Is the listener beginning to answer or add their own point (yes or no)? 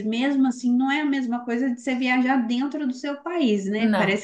no